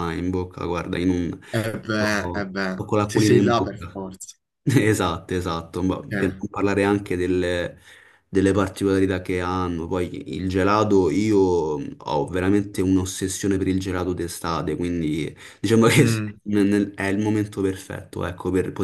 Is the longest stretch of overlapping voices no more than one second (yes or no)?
no